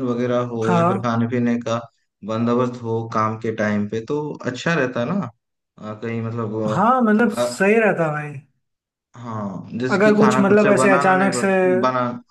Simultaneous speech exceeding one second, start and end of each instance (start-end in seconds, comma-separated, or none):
9.9-11.5